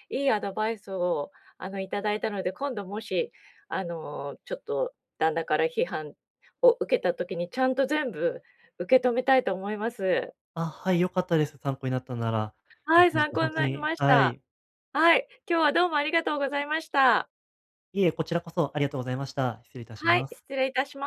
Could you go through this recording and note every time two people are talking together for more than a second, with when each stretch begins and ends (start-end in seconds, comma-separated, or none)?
12.9-14.4